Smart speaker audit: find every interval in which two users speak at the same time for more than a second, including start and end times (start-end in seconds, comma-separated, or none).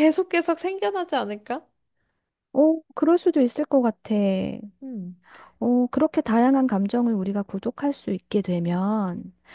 none